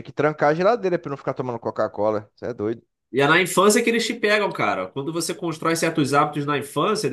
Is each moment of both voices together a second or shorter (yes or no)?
yes